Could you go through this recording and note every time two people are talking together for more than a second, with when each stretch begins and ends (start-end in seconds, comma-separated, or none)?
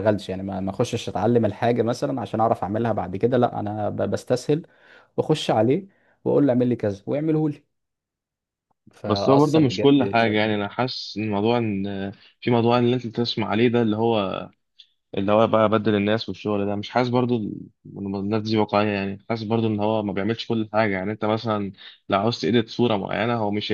9.1-10.4